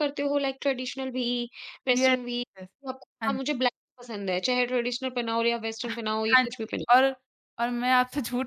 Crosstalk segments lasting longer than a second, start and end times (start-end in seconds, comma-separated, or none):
none